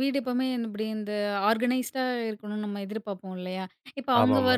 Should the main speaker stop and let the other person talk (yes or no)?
no